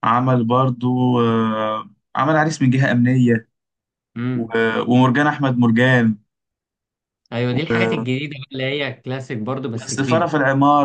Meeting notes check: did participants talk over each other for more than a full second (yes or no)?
no